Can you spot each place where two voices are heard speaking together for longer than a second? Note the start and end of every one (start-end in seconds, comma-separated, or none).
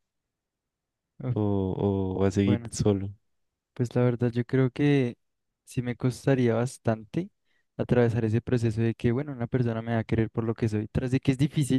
none